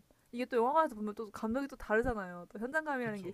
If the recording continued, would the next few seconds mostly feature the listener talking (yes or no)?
no